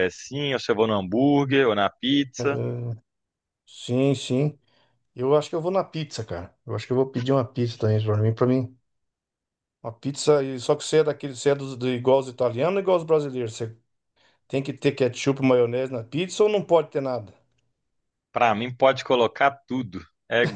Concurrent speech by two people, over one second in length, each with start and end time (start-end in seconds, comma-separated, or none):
none